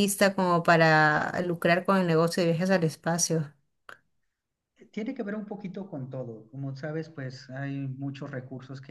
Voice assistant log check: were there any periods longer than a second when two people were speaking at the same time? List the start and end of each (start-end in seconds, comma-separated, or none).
none